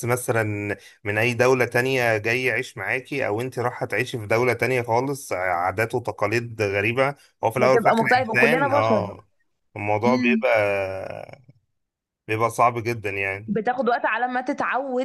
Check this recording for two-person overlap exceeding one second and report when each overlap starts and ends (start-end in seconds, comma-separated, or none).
7.6-9.1